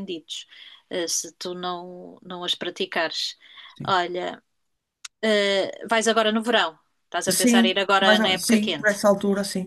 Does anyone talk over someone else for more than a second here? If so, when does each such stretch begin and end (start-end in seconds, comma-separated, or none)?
7.4-8.9